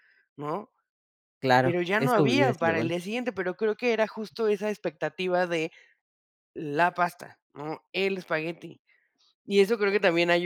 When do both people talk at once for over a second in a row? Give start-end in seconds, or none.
1.6-2.9